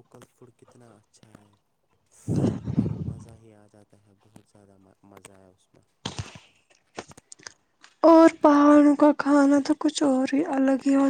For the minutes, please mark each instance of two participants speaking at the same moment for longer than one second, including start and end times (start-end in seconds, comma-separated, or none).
none